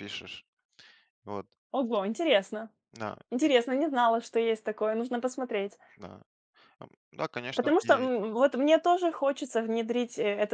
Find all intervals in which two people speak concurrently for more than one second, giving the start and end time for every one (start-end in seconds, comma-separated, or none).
none